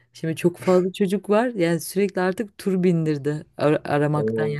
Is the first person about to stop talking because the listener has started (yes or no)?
no